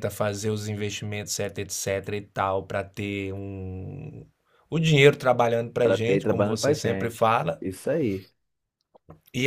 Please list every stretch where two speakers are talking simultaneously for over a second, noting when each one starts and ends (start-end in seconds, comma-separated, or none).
5.8-7.6